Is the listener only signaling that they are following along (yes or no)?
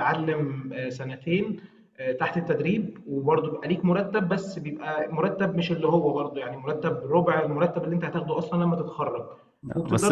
yes